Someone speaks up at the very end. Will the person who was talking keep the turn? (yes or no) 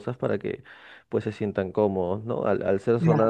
yes